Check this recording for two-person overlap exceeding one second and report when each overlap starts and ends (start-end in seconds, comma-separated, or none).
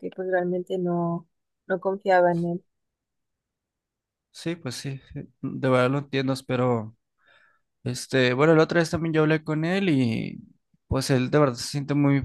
none